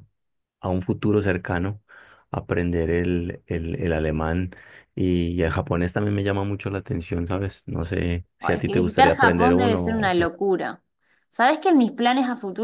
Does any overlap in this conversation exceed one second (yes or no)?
yes